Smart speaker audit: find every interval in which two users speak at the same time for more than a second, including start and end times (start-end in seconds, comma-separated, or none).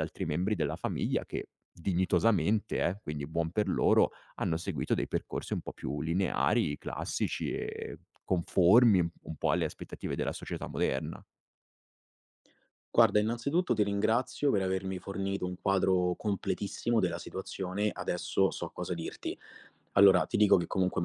none